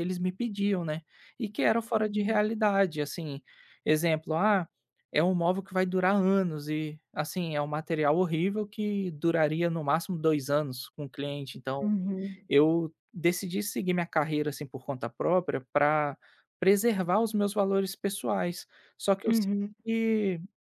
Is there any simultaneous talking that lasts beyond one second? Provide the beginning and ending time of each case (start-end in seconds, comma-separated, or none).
none